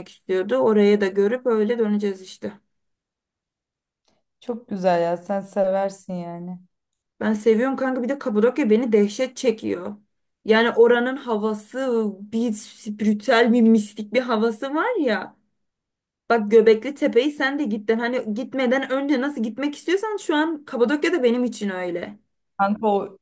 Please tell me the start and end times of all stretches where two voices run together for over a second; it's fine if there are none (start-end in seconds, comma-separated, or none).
none